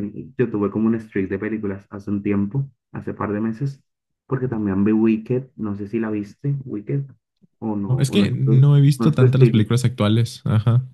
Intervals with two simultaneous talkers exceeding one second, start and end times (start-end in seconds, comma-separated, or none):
7.8-9.6